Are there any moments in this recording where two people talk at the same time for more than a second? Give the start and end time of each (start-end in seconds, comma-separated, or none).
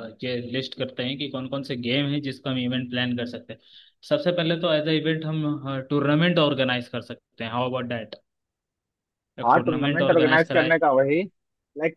9.4-10.7